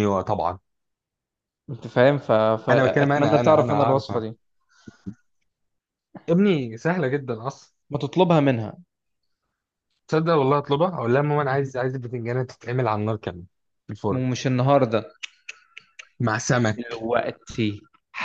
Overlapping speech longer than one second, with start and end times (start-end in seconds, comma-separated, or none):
2.7-4.2